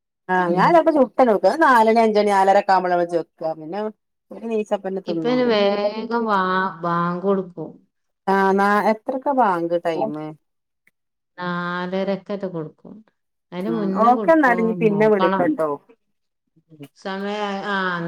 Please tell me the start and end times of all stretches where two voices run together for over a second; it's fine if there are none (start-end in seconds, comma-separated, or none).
13.6-15.4